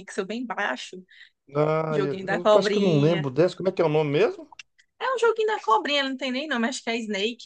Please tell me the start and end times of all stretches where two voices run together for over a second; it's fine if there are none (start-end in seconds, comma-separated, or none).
1.9-3.3